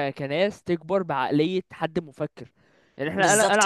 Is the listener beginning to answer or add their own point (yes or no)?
no